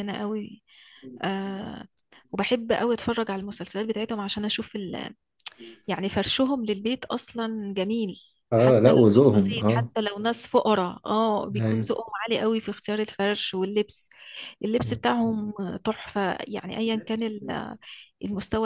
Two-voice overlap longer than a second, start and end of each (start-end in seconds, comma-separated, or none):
8.5-9.9